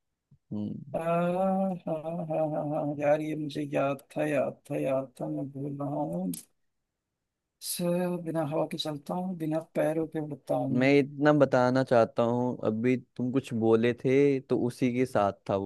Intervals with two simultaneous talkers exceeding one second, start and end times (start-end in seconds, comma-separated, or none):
none